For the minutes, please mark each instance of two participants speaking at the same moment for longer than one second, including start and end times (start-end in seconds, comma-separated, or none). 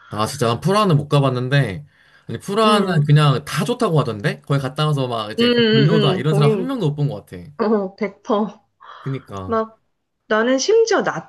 5.4-6.7